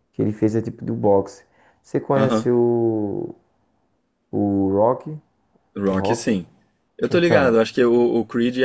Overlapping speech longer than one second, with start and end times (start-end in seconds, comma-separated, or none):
none